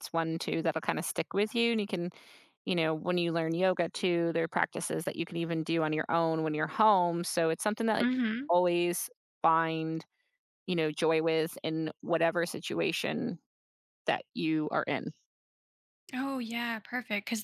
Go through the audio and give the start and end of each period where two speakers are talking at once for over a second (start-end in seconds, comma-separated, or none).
none